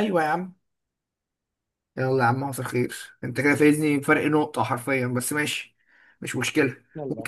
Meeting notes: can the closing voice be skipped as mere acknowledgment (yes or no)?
yes